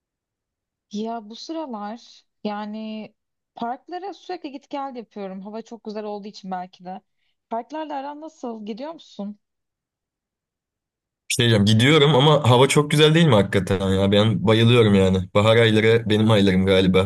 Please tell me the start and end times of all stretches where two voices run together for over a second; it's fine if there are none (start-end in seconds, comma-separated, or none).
none